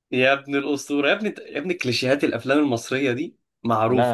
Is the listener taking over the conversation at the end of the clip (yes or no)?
yes